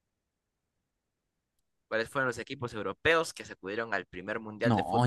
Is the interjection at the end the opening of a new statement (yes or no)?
yes